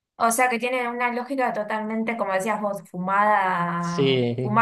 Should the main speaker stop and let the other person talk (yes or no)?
no